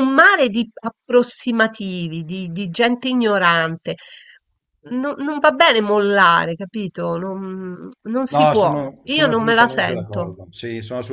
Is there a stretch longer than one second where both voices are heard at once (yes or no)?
yes